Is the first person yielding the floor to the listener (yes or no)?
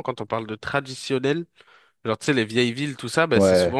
no